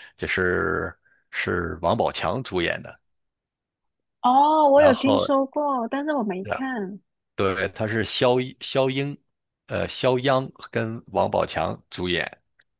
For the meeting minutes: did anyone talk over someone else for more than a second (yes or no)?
no